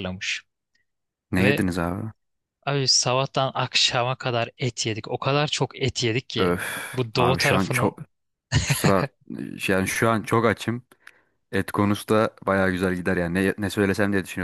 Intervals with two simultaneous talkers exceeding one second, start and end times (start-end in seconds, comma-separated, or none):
6.4-8.0